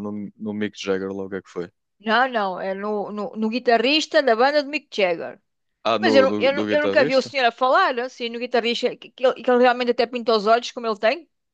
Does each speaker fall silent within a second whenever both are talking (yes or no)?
no